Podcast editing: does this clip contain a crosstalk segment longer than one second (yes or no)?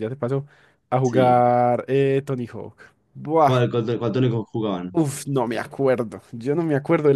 no